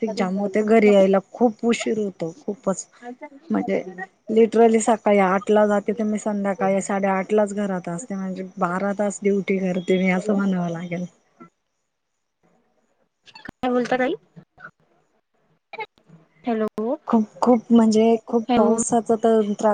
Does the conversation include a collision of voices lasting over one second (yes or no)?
no